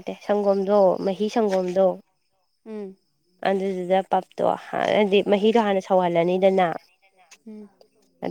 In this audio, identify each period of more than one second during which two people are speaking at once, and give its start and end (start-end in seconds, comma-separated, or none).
5.3-6.7